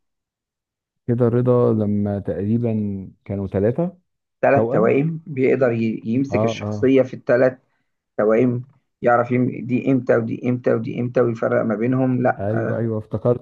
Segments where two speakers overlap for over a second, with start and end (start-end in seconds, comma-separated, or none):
none